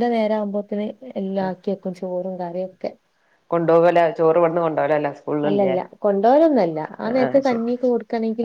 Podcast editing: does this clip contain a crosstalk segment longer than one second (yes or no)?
no